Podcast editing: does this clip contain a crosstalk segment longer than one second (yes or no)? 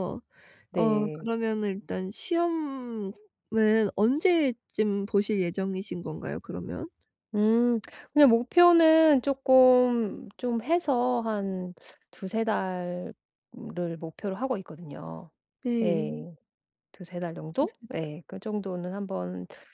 no